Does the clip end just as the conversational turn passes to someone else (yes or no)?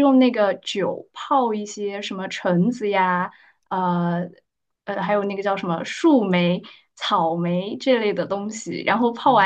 no